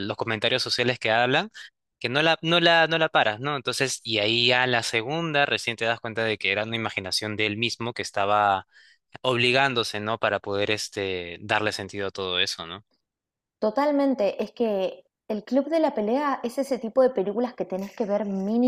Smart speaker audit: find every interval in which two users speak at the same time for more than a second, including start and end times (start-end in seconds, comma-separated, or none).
none